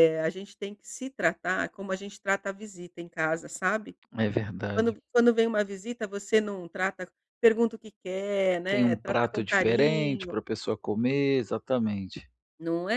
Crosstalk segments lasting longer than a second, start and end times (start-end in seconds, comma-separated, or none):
8.7-10.4